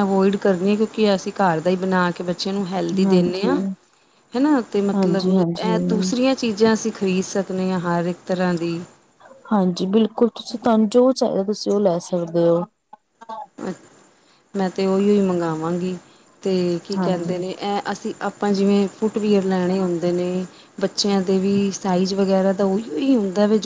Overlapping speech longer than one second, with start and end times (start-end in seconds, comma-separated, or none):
4.9-6.1